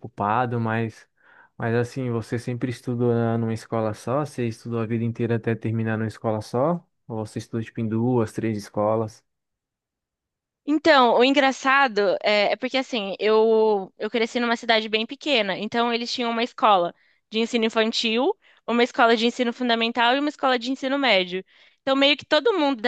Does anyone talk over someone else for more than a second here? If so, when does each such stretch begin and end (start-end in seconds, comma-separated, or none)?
none